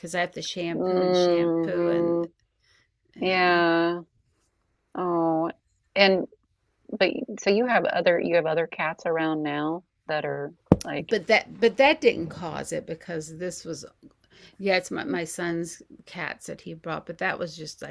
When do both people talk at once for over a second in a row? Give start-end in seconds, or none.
0.7-2.2